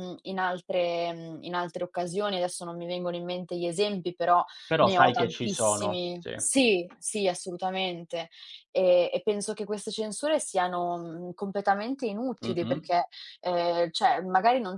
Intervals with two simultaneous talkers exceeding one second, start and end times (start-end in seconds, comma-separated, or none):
4.7-6.3